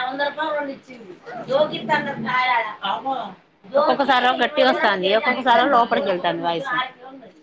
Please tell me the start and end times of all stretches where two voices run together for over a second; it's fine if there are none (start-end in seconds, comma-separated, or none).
4.3-6.1